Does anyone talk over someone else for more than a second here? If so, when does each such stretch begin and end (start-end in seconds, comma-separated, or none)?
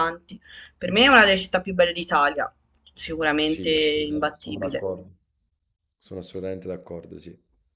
3.4-4.9